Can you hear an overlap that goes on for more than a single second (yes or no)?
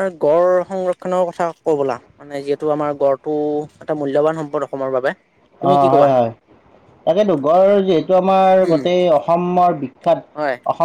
no